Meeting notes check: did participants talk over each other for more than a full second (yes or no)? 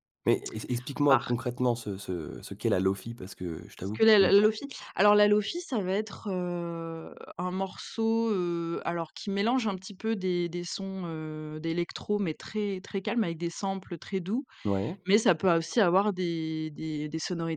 no